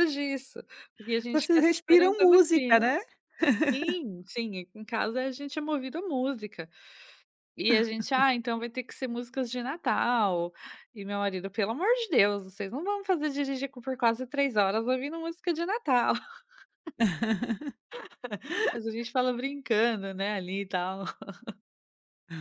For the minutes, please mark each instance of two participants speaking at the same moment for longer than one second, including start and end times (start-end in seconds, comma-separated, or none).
1.3-3.0